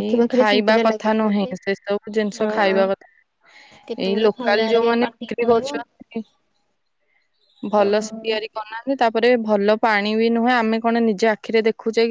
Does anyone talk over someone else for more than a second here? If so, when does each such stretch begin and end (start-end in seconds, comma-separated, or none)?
3.9-5.8